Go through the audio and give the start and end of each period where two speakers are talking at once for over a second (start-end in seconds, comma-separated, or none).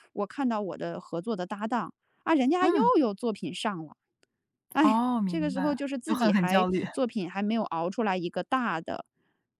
4.8-6.8